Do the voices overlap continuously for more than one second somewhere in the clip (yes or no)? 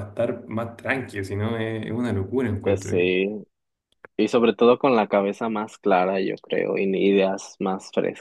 no